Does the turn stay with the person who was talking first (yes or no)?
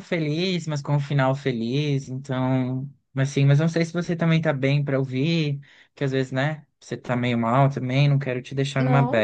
no